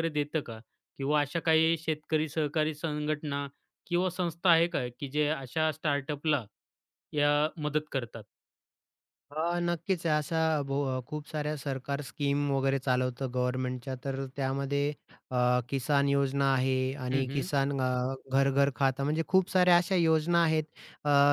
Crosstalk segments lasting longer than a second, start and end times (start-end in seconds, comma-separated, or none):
none